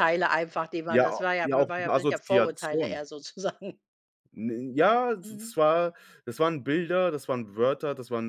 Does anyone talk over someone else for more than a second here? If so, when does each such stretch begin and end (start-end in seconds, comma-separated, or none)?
0.9-3.0